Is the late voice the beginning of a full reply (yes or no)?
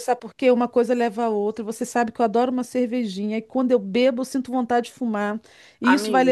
no